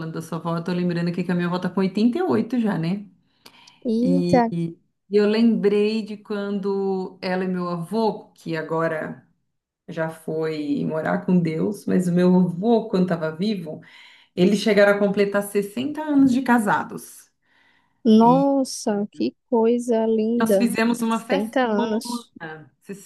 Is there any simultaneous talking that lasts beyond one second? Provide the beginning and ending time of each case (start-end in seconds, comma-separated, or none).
20.4-21.6